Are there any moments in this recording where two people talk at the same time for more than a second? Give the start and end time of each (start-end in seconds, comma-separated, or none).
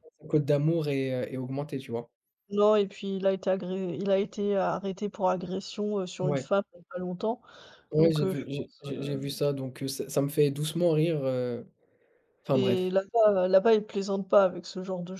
8.0-9.3